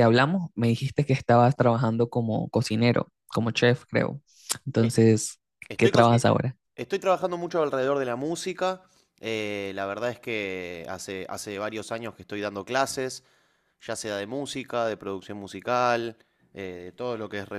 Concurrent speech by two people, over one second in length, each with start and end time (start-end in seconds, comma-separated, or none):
none